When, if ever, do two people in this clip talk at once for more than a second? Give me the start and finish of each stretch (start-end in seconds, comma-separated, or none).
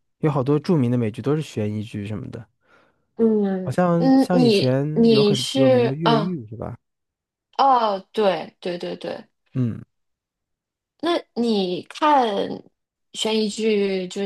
3.6-6.3